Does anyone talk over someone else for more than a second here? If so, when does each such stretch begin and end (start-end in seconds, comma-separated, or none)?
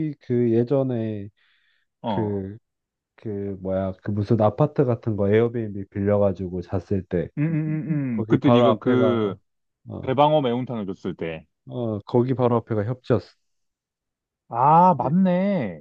8.1-9.3